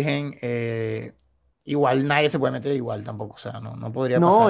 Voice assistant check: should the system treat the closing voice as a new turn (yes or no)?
yes